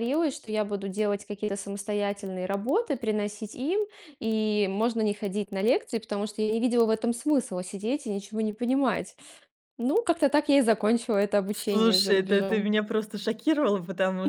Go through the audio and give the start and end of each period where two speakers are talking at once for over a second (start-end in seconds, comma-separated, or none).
11.5-12.7